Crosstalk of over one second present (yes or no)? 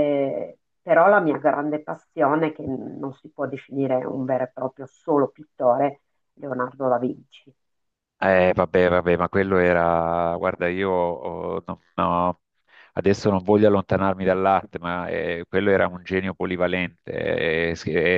no